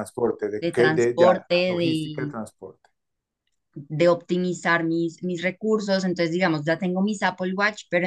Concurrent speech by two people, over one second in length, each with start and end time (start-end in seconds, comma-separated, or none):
0.6-2.4